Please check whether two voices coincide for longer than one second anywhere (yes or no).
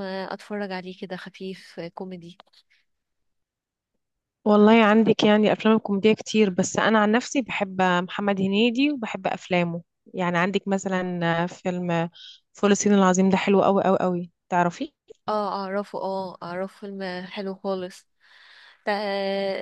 no